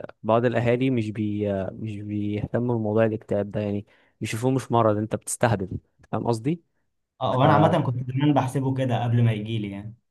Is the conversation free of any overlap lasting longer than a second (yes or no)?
yes